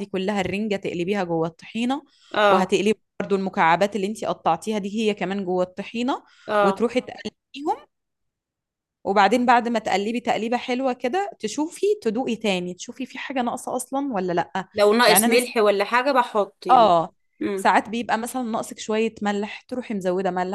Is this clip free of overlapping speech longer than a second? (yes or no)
yes